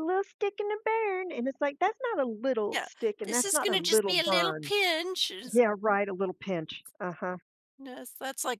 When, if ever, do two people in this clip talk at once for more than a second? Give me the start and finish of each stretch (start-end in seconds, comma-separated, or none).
2.7-4.7